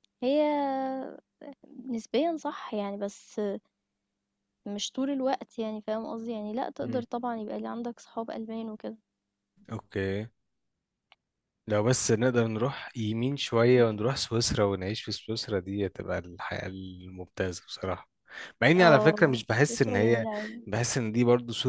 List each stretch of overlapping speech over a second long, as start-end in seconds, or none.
18.8-20.3